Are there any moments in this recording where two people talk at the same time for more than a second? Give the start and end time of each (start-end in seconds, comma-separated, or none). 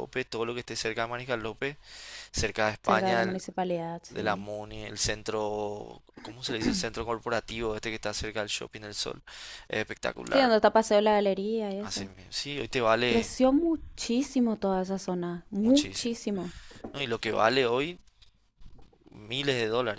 none